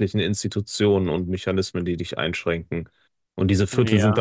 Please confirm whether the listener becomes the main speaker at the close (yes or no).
no